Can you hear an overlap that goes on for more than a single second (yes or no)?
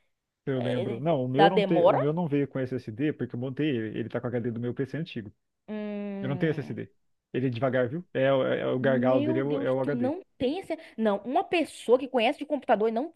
yes